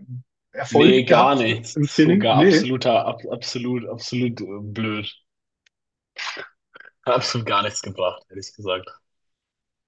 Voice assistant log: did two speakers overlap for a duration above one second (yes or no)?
yes